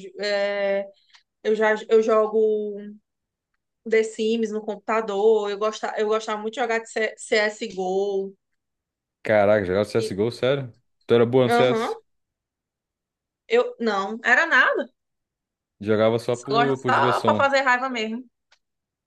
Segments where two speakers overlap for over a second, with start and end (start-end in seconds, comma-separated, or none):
16.3-17.5